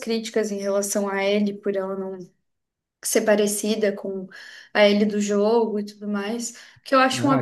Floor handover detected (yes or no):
no